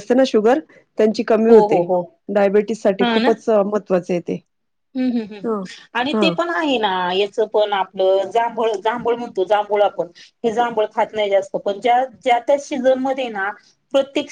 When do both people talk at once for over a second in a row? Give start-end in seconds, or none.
none